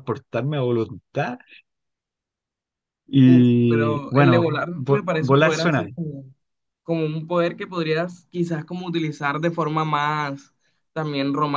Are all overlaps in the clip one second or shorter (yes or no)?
no